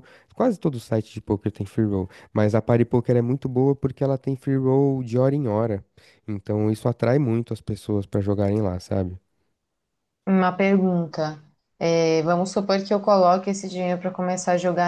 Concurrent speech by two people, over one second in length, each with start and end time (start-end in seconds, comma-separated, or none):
none